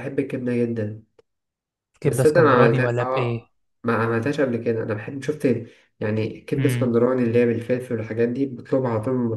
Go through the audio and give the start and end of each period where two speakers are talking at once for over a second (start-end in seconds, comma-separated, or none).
2.0-3.5